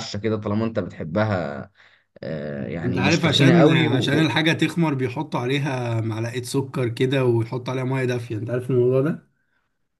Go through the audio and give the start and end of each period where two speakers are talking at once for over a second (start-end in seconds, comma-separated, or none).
2.8-4.3